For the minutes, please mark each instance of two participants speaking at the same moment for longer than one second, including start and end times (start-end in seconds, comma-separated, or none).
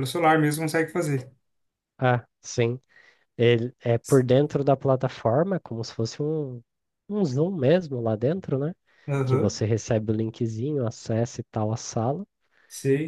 none